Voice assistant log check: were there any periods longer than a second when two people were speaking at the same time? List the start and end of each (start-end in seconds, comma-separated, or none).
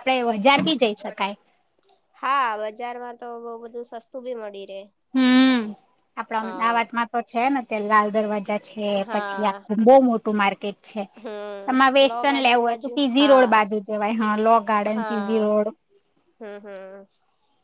11.6-13.5